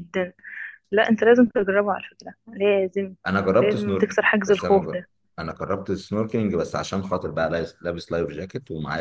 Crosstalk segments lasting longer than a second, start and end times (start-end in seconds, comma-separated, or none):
3.6-5.1